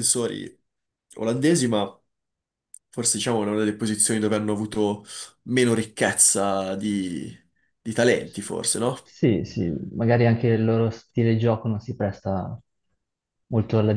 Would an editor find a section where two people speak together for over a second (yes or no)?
no